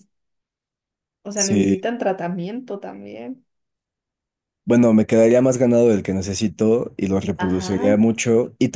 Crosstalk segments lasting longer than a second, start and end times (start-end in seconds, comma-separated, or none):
none